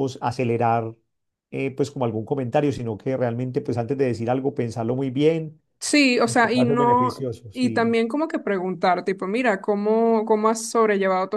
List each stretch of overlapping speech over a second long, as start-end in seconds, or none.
6.6-8.0